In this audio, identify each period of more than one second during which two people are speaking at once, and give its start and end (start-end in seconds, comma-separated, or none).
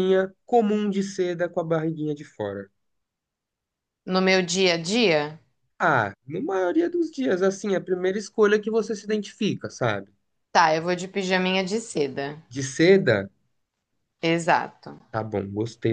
none